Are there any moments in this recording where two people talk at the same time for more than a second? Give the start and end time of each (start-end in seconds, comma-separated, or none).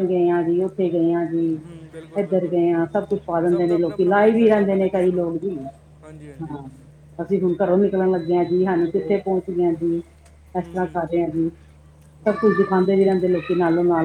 3.5-5.2